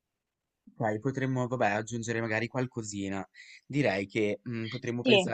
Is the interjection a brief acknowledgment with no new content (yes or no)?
yes